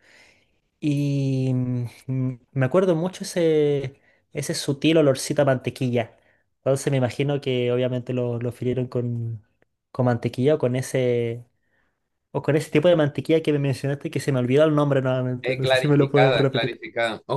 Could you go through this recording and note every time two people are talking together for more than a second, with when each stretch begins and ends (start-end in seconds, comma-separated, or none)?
15.4-16.8